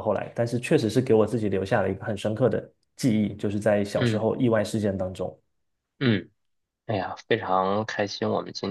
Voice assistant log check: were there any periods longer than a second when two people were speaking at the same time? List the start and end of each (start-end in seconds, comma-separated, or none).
none